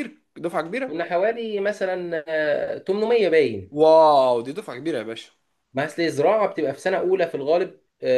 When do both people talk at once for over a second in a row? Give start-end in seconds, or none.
none